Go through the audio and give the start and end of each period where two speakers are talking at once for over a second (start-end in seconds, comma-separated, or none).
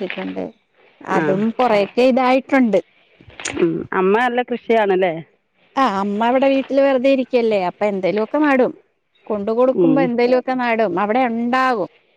none